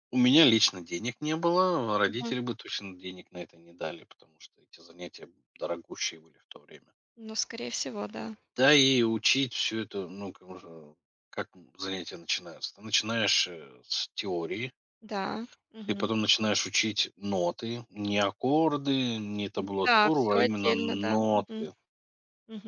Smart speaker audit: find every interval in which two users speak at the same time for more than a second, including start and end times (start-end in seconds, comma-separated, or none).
19.8-21.7